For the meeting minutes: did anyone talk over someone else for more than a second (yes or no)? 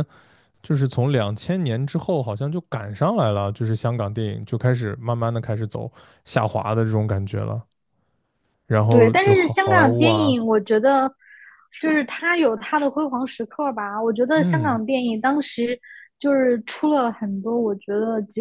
yes